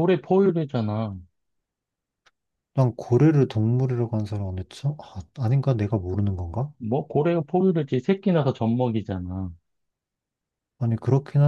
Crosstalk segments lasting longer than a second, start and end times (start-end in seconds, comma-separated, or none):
none